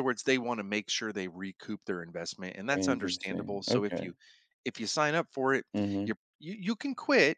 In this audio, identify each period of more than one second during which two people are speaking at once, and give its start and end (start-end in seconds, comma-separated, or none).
2.8-4.1